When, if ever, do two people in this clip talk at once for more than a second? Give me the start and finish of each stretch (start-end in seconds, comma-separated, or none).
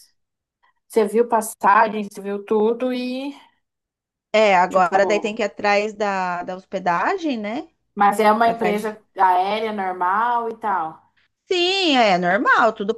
none